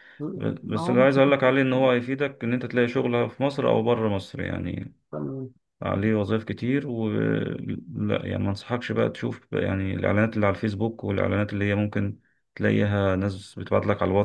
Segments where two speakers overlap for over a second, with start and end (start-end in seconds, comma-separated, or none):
0.6-1.9